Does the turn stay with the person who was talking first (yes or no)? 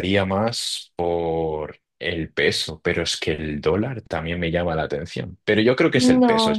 no